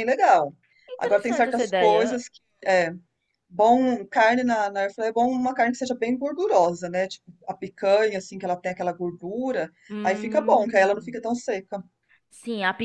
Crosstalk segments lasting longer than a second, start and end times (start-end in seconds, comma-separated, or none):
1.0-2.2, 9.9-11.1